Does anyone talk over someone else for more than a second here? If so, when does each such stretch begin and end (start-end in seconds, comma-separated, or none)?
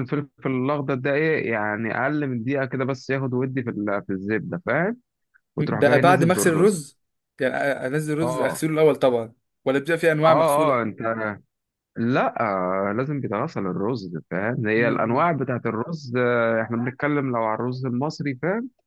5.6-6.8